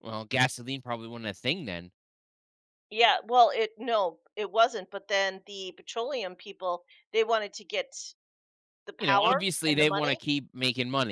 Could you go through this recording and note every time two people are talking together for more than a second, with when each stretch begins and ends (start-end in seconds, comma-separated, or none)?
9.0-10.2